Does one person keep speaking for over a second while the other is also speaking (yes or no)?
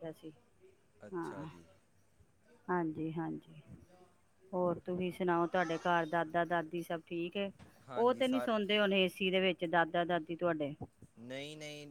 no